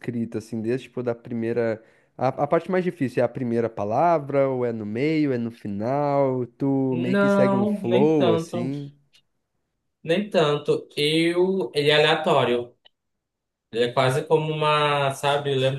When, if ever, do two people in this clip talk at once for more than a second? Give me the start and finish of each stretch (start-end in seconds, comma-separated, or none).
6.9-8.7